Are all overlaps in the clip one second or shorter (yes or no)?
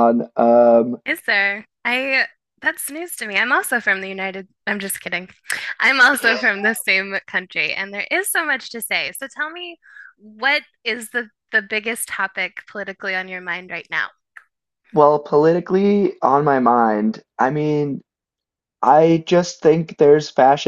yes